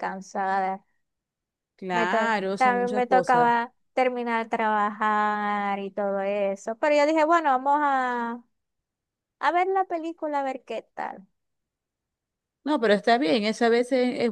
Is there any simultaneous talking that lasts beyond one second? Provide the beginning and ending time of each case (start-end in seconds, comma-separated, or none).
1.9-3.6